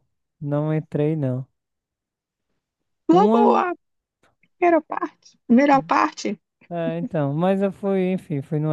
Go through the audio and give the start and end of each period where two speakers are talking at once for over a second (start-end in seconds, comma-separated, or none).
none